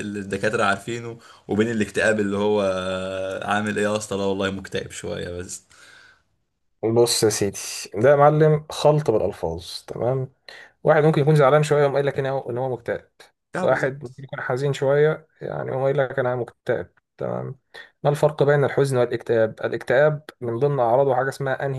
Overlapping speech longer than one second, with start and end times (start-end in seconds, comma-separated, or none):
none